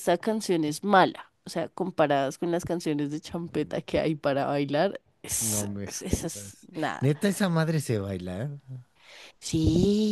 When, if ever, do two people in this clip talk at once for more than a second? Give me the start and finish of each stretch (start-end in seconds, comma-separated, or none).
5.4-7.1